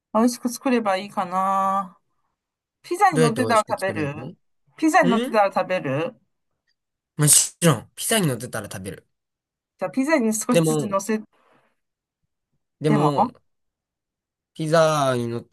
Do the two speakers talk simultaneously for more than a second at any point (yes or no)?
yes